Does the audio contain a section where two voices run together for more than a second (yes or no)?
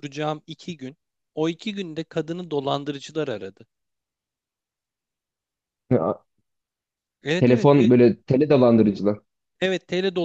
no